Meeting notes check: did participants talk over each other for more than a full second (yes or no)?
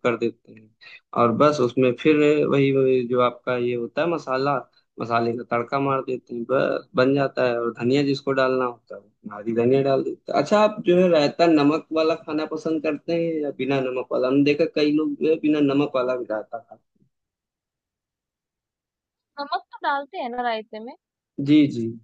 no